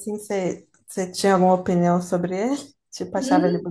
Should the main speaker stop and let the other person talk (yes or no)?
yes